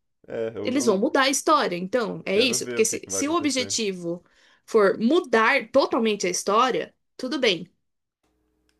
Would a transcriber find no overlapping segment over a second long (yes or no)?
no